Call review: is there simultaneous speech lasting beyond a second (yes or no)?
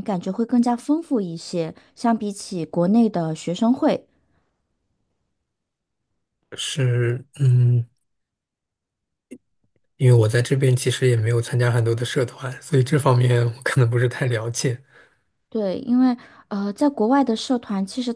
no